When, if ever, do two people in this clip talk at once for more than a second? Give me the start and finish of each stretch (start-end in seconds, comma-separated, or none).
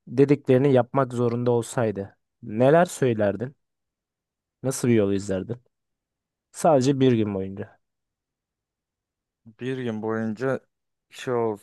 none